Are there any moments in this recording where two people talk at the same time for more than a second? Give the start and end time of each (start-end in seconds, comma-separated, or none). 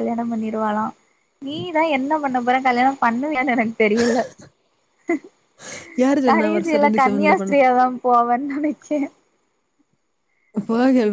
6.3-7.6